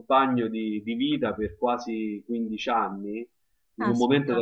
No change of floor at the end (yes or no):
yes